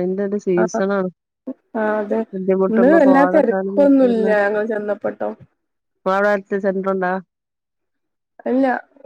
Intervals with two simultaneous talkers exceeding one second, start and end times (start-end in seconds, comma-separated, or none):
2.7-4.2